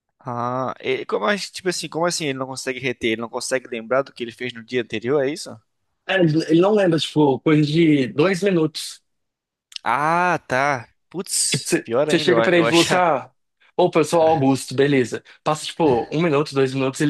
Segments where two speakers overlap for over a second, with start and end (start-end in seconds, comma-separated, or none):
11.5-13.0